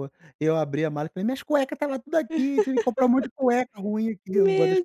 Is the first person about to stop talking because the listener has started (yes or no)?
yes